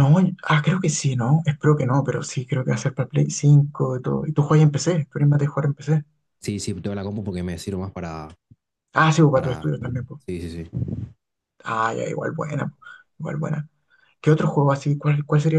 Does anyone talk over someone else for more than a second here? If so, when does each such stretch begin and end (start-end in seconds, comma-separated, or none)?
none